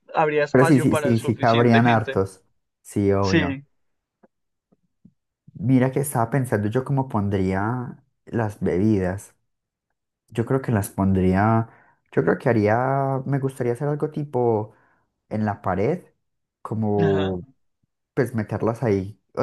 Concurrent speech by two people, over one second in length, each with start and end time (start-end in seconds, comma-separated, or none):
0.5-2.2